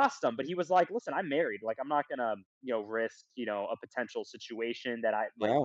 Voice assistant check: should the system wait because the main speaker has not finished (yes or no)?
yes